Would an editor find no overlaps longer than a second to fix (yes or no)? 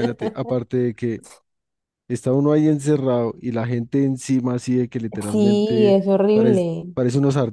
no